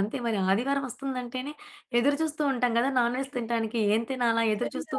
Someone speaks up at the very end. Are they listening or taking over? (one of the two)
taking over